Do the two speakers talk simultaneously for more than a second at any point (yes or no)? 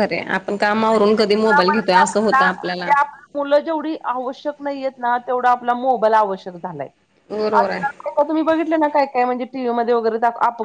yes